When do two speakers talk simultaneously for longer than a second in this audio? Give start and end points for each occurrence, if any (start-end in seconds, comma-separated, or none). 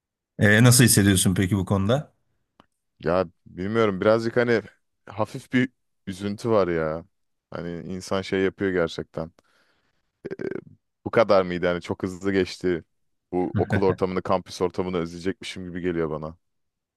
none